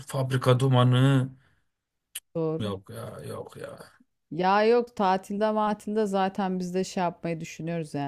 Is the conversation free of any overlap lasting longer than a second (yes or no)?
yes